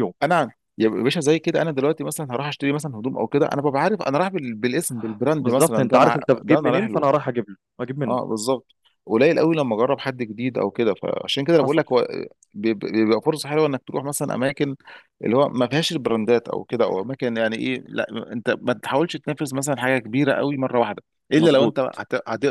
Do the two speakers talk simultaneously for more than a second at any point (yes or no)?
yes